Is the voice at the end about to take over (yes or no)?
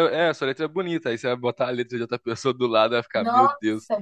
yes